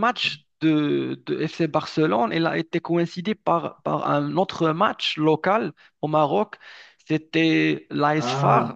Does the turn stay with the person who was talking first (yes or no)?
yes